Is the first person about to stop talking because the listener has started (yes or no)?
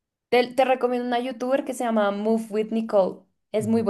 yes